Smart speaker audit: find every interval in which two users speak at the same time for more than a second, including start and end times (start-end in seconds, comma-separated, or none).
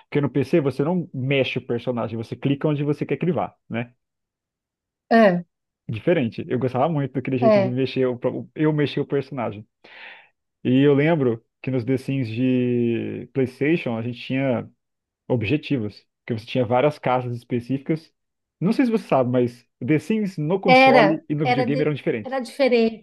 20.7-22.4